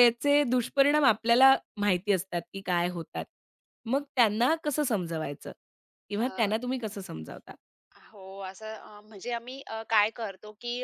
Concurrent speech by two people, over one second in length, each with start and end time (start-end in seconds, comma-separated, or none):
none